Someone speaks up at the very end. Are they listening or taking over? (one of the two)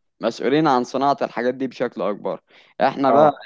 listening